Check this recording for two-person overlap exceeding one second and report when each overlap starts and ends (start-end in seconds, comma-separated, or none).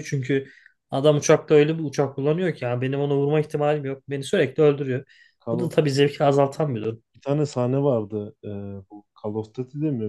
none